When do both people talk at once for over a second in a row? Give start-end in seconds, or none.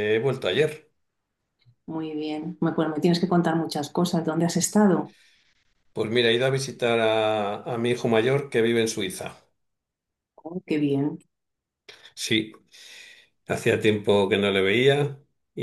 none